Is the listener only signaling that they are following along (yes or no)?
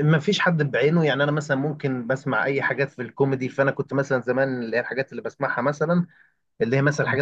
yes